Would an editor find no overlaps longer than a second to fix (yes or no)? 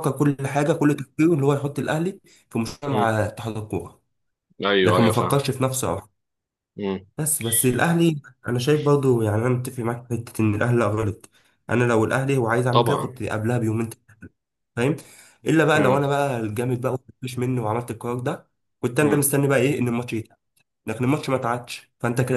yes